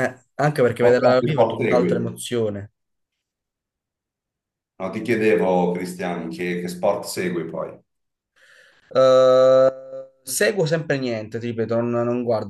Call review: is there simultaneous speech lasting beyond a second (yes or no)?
yes